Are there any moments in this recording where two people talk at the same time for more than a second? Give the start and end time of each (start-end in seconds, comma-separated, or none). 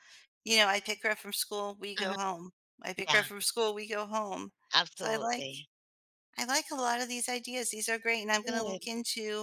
none